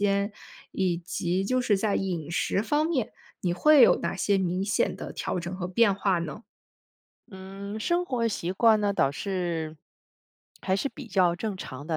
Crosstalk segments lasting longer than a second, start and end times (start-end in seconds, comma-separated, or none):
none